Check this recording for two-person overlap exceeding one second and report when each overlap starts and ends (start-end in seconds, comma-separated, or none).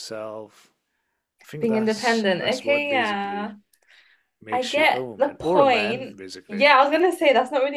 1.6-3.5, 4.5-6.7